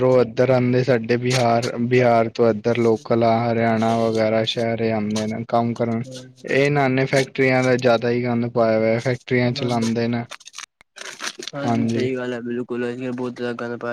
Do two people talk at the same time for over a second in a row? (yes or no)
no